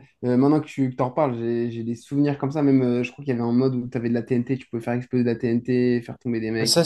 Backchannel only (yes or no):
no